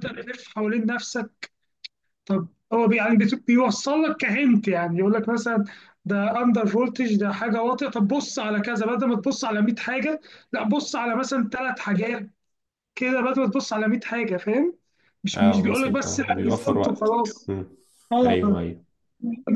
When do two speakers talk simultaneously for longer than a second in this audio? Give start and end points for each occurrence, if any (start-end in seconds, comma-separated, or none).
15.3-17.5